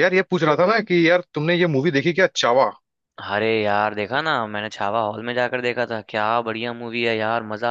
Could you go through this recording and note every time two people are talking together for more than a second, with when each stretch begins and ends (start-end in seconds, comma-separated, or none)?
none